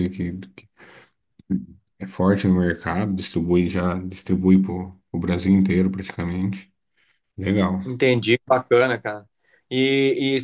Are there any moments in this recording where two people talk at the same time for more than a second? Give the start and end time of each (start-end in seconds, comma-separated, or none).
none